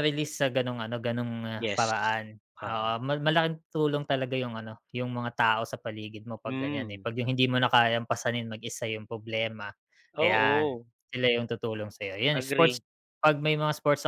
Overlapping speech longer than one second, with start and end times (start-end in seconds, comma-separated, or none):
none